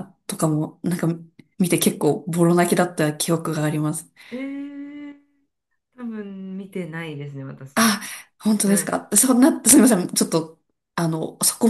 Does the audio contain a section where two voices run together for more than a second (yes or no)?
no